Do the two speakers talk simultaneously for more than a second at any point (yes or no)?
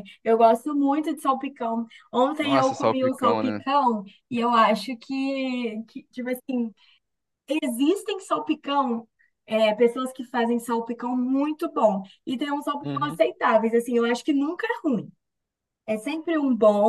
yes